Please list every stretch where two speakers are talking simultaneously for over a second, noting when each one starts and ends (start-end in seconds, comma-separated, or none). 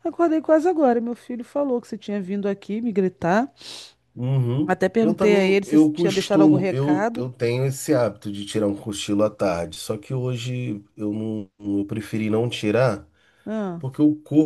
4.6-7.2